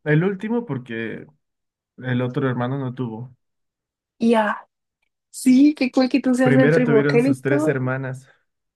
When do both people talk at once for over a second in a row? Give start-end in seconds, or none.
6.4-7.8